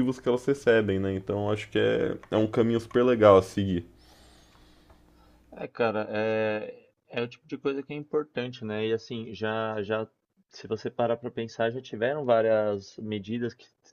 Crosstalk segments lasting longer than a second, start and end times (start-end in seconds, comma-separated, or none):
none